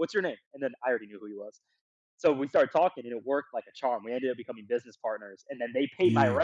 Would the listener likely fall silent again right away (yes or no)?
yes